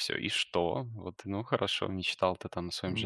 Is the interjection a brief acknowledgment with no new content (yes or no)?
yes